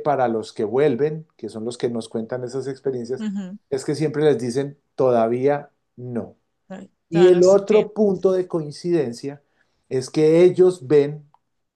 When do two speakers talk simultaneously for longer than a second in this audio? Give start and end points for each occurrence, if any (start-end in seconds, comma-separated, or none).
7.1-8.3